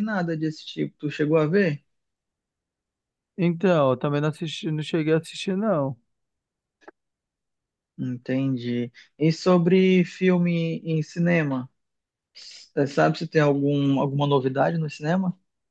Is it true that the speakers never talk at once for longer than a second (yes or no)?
yes